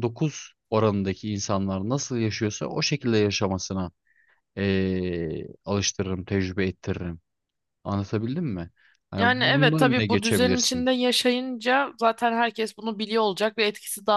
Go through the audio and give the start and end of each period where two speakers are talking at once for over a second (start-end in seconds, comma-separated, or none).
9.2-10.9